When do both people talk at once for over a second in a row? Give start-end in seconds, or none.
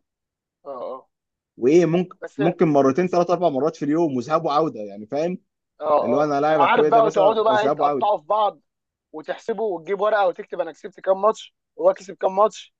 6.0-8.1